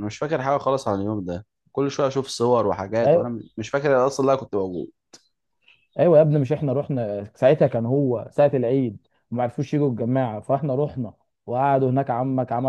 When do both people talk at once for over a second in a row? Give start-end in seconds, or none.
none